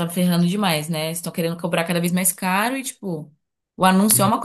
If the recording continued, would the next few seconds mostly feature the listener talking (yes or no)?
no